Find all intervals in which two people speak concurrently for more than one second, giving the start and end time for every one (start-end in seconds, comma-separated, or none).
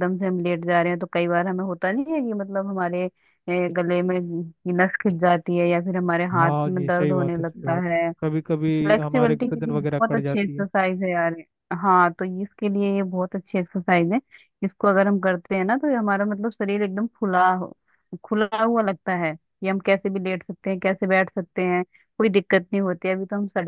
6.4-8.0, 8.8-10.6